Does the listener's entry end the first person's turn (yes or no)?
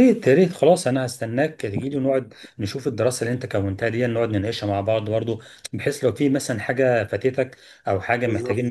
no